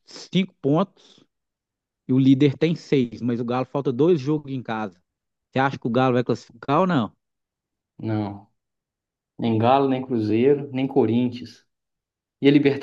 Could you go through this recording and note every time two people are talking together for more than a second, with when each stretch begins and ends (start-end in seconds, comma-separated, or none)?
none